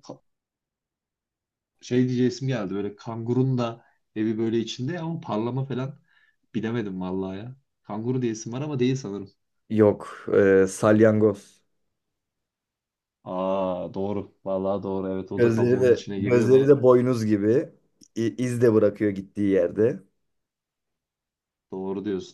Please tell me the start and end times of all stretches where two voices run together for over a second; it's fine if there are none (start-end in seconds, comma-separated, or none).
15.4-16.7